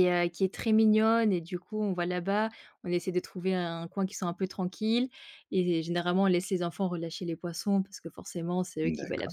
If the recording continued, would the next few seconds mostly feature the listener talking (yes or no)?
no